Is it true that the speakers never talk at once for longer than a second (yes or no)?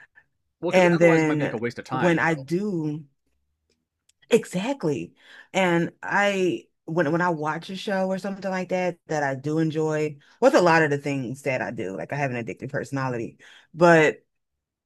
no